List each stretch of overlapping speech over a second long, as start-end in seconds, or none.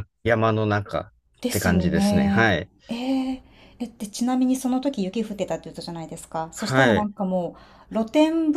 1.5-2.7